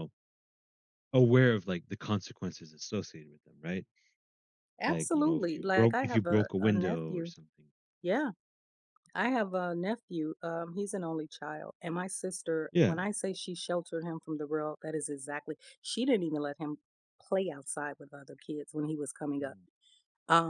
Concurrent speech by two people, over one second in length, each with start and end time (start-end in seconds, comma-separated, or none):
4.9-7.3